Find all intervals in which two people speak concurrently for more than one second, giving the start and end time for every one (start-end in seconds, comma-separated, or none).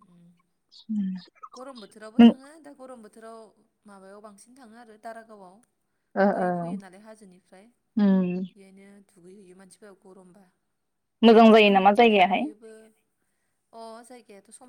none